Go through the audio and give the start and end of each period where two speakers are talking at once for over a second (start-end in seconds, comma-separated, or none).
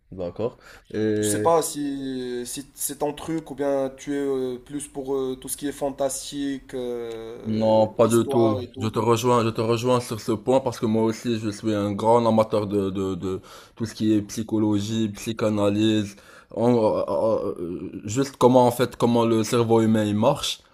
7.4-8.9